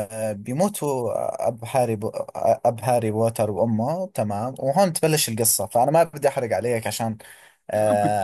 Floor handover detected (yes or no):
no